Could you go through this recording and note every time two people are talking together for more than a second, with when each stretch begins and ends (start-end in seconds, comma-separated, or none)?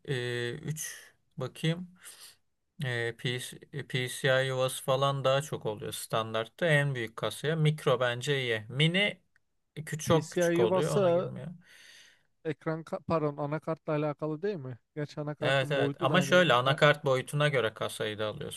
10.1-11.3, 15.4-16.8